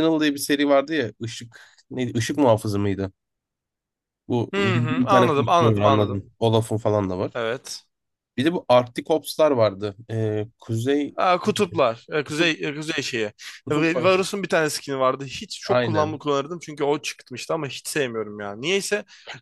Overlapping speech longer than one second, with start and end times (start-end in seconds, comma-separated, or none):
4.5-6.2